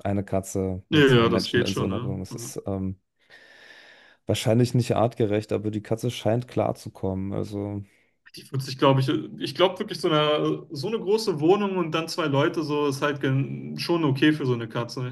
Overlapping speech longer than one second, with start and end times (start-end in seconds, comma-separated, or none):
0.9-2.5